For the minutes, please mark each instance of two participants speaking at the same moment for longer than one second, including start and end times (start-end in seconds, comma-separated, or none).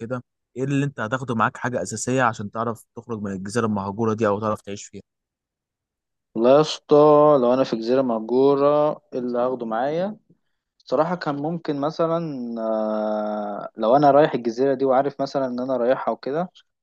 none